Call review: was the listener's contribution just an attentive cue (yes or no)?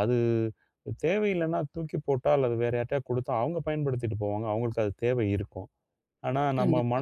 yes